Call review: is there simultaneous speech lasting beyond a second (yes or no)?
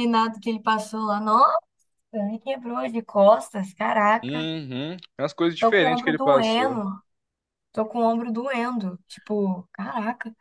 yes